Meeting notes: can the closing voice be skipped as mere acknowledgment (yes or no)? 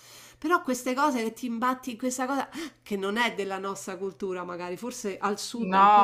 no